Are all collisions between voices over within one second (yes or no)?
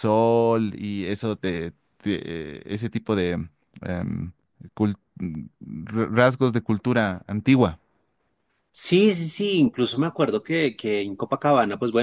yes